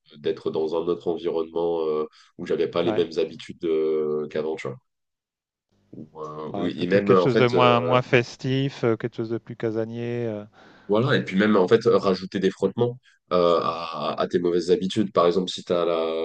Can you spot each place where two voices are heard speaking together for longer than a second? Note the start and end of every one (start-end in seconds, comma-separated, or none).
6.5-8.0